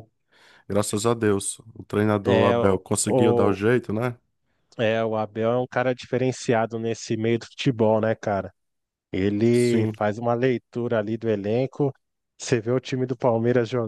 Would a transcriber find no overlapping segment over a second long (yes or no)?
no